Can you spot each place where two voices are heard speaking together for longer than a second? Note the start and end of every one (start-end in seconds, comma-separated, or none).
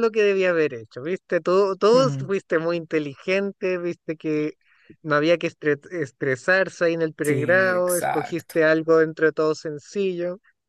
7.2-8.6